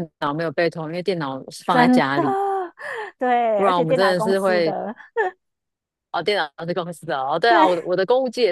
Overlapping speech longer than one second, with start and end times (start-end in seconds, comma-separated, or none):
3.5-4.7